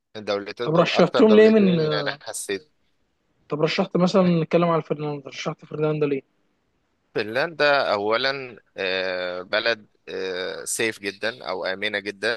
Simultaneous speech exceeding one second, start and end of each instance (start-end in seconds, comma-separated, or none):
0.6-2.2